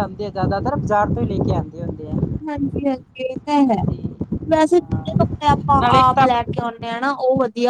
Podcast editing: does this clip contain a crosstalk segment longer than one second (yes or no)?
yes